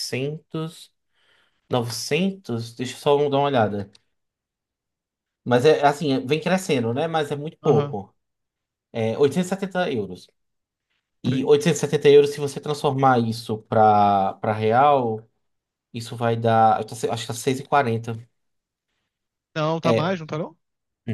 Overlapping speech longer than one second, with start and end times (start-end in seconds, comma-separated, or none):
none